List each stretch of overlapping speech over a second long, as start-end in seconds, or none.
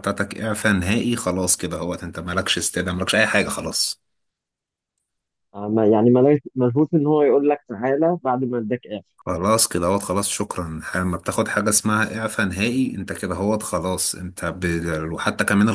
none